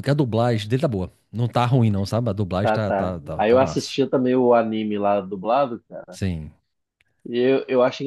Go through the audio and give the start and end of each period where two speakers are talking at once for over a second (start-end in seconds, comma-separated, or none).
2.6-4.0